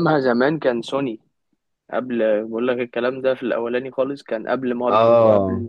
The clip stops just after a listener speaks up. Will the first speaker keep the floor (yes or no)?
no